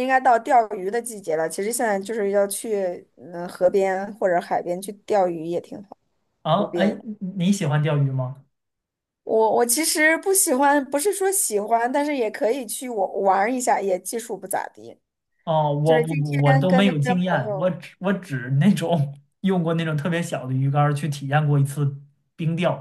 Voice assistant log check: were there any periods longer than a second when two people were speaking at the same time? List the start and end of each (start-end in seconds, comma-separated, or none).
15.8-17.7